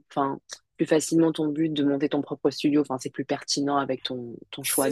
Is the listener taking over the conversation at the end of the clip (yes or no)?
yes